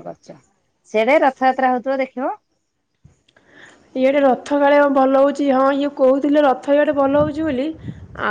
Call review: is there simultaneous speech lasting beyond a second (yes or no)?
no